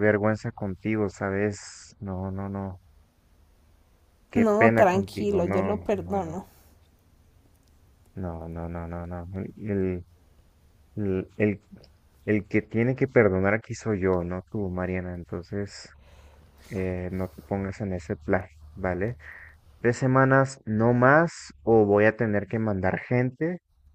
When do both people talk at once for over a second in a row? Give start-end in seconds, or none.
4.3-6.4